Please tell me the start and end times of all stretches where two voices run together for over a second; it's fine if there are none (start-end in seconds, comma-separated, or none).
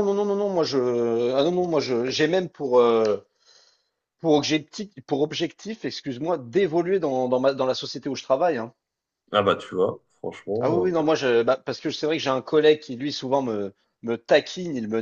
none